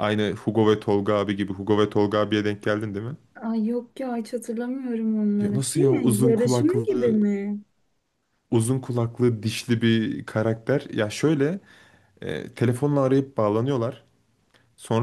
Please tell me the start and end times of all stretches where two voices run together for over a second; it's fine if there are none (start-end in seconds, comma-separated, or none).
5.4-6.9